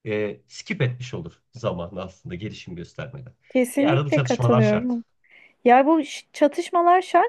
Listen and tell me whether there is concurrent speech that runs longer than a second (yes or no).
yes